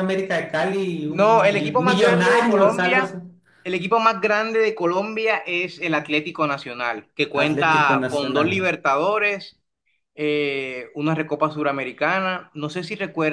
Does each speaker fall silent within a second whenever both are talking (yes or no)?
no